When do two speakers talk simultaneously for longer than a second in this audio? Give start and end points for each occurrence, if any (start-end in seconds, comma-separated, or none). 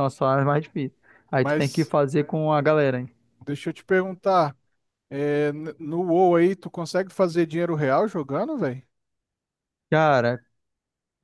none